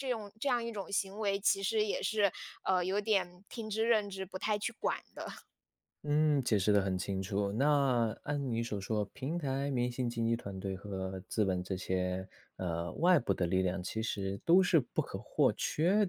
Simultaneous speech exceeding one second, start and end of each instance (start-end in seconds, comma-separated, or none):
none